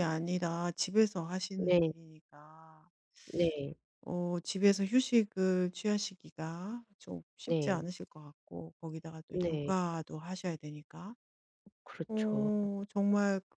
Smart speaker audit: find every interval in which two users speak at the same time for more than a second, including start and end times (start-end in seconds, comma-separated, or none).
none